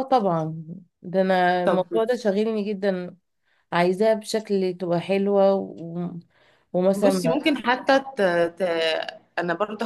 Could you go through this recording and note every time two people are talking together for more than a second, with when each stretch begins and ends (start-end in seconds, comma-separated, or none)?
none